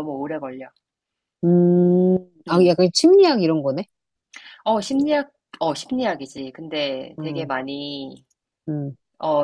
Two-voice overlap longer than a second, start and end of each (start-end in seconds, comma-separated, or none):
none